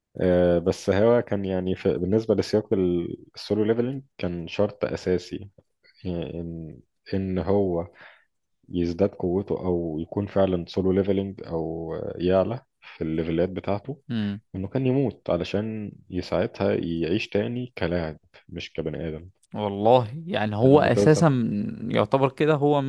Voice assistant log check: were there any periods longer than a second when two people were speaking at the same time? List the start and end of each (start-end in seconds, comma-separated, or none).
none